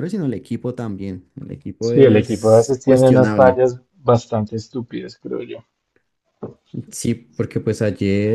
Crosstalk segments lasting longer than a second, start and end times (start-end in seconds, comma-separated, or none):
1.8-3.6